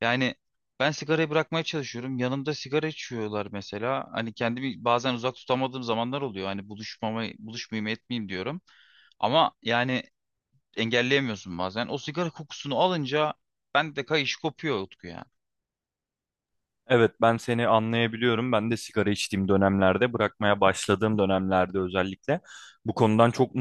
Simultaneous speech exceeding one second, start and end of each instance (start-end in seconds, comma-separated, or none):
none